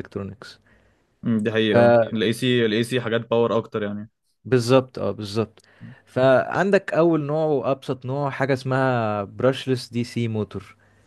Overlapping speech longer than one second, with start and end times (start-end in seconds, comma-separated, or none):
none